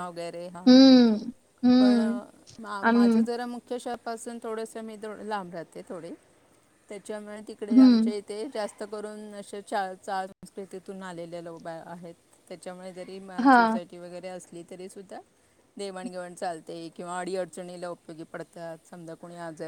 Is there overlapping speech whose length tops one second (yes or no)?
no